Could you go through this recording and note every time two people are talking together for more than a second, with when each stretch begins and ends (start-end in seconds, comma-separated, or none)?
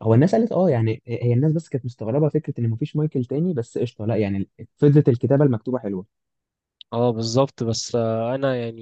none